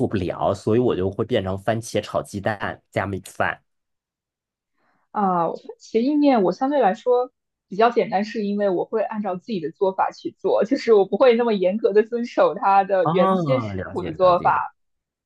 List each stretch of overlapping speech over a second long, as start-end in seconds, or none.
13.0-14.6